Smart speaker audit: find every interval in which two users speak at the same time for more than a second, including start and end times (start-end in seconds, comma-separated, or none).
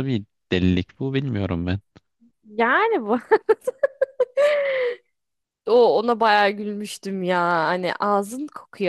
none